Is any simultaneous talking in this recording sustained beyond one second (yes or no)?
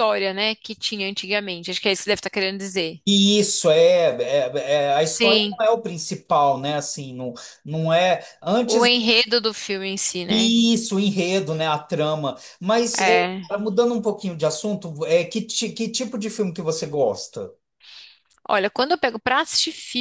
no